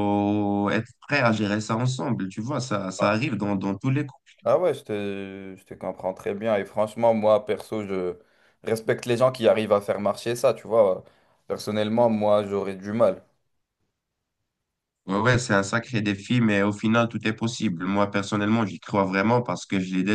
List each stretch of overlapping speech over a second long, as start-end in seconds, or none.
none